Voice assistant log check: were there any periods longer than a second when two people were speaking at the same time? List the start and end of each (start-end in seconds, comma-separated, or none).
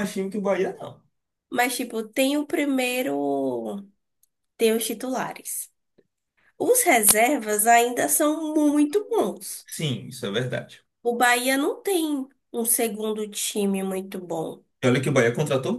none